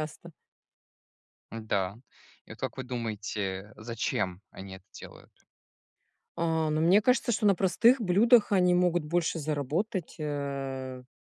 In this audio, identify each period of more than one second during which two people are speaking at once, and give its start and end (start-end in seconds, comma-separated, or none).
none